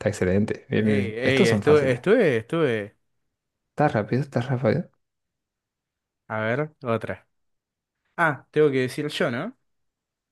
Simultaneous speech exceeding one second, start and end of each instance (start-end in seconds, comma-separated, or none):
0.8-2.0